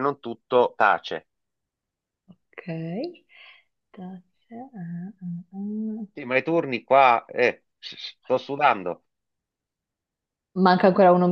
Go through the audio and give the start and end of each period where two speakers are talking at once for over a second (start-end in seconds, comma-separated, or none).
none